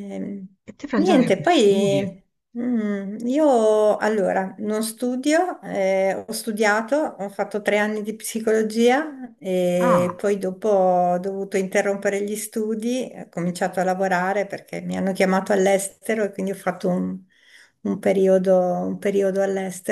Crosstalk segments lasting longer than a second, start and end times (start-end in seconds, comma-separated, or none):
0.9-2.2